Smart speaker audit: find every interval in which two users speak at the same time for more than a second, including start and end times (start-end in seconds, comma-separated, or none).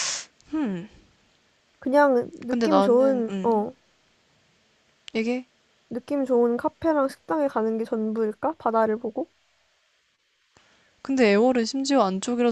2.5-3.7